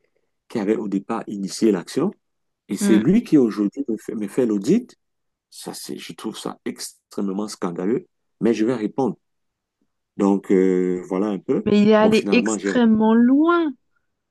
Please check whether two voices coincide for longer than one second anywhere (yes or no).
yes